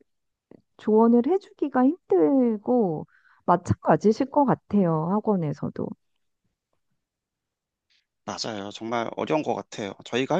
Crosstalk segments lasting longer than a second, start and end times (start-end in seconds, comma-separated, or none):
none